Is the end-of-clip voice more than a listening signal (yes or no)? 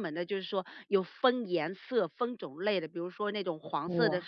no